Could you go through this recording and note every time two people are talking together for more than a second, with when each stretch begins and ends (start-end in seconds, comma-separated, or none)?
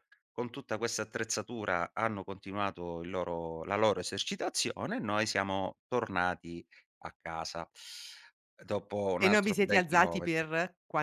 9.2-10.5